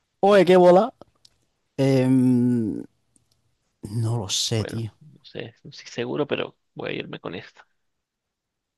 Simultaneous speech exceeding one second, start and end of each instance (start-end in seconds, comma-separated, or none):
none